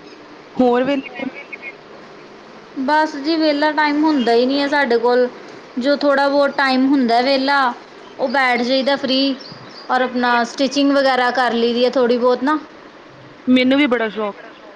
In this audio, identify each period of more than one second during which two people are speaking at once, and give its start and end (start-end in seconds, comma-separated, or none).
none